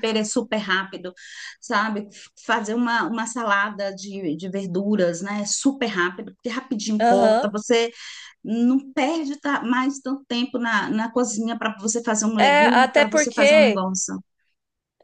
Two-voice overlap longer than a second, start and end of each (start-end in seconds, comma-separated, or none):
12.4-13.8